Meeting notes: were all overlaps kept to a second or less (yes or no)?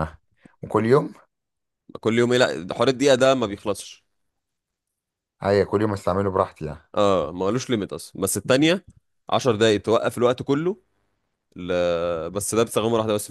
yes